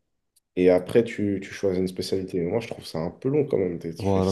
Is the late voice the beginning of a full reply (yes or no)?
yes